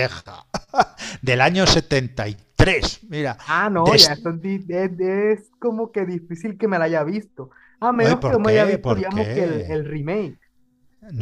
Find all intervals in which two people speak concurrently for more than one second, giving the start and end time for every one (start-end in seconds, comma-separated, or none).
8.0-9.8